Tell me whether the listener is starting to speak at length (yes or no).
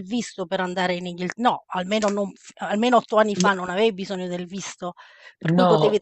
no